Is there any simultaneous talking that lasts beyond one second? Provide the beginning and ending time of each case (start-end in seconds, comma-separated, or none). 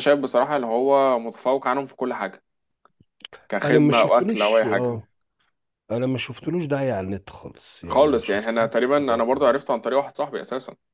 3.6-5.0, 7.8-9.6